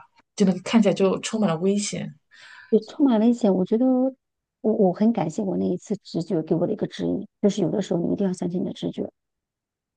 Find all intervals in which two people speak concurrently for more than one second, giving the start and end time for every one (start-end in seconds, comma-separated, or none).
none